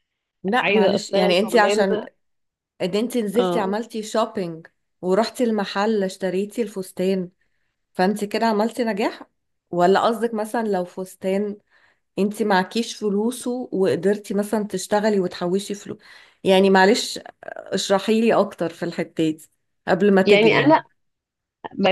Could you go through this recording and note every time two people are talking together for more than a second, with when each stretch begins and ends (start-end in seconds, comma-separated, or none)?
0.6-1.9